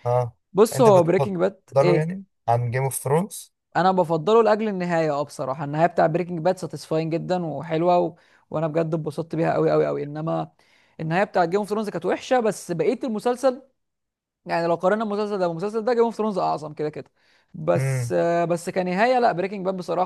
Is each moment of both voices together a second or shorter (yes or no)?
no